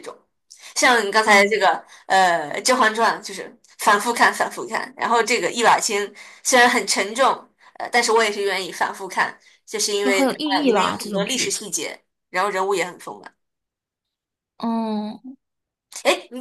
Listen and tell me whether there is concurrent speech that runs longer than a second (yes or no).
yes